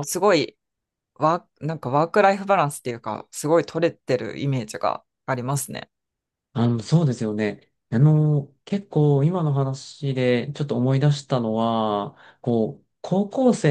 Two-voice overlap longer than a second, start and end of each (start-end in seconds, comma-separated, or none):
none